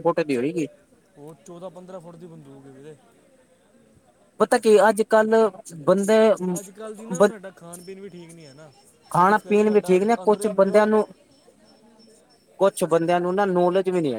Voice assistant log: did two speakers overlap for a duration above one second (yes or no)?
yes